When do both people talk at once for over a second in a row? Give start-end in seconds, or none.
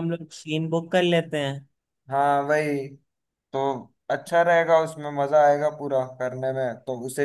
none